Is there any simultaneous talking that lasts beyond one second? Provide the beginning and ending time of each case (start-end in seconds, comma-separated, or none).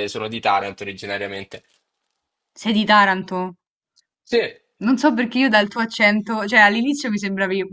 none